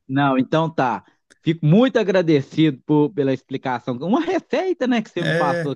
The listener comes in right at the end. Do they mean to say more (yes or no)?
yes